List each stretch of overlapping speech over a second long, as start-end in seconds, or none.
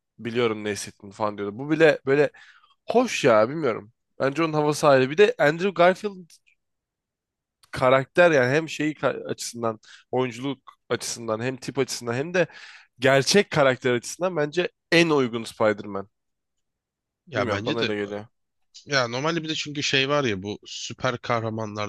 none